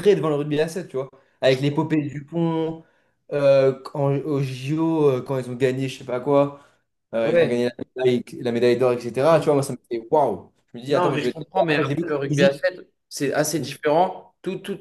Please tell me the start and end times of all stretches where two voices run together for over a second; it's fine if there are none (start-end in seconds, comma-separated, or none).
10.9-12.6